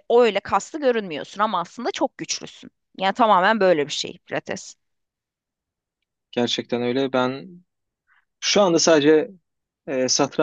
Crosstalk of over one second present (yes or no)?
no